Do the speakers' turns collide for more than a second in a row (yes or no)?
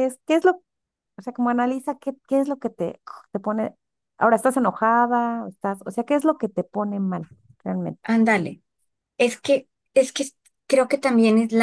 no